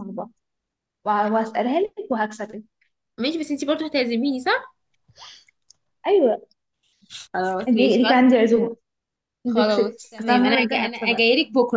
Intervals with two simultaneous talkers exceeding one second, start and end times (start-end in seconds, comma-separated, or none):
9.5-11.2